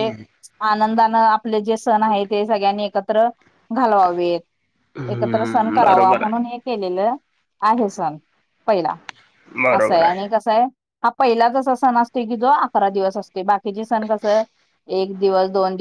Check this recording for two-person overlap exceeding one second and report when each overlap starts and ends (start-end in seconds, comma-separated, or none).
5.1-6.4